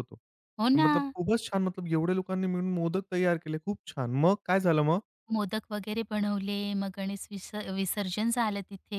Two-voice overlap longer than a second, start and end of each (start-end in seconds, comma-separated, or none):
none